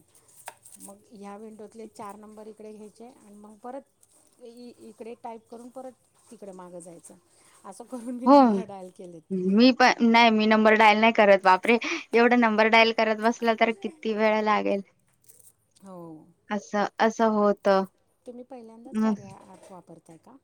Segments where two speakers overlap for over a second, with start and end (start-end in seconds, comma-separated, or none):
none